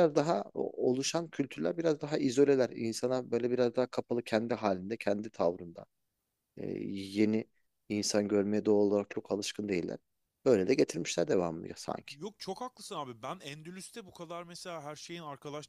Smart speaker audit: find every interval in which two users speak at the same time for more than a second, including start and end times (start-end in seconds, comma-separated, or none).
none